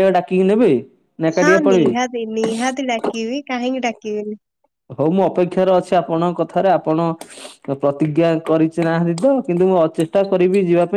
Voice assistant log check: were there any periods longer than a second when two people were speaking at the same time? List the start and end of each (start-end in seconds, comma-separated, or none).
none